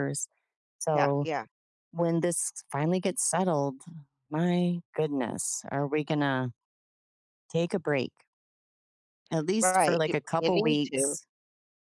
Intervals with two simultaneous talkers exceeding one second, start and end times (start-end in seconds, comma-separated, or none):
9.6-11.2